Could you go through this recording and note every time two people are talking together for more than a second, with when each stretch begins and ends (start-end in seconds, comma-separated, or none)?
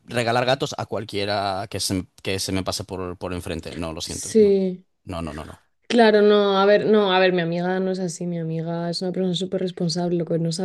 none